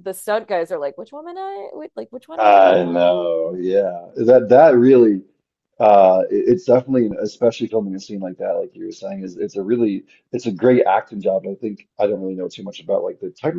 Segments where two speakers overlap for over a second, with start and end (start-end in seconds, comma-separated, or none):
none